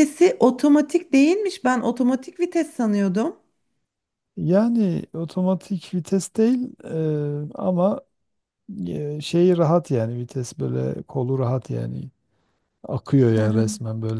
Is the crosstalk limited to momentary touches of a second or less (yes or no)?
yes